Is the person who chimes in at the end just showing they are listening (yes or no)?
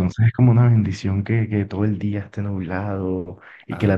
yes